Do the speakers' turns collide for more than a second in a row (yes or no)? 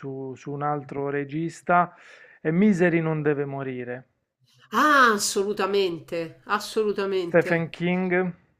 no